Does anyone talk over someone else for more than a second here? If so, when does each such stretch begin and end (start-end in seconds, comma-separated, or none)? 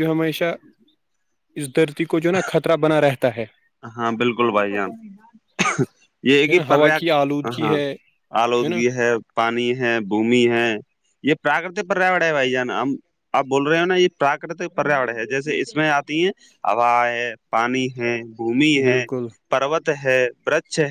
none